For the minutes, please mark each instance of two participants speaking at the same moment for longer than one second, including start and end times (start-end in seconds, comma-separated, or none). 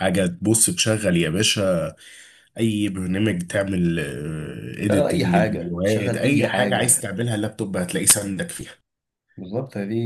4.9-7.1